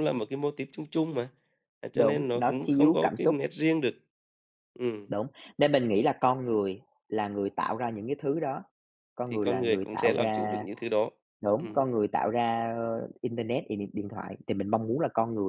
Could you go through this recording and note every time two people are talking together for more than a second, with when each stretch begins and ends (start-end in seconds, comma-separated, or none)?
1.9-3.4, 9.2-10.7